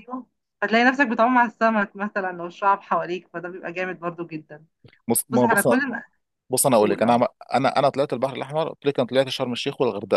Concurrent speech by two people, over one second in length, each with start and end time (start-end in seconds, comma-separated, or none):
none